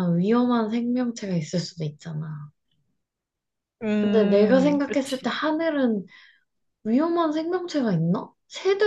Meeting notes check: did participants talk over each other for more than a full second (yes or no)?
yes